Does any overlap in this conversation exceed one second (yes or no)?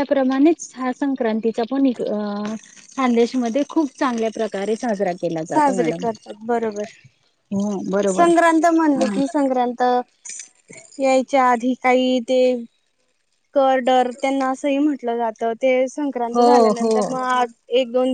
no